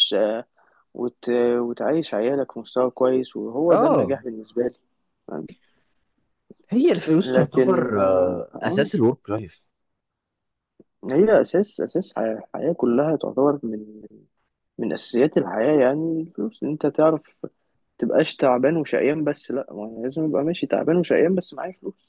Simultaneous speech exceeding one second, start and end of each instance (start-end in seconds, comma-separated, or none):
7.2-8.9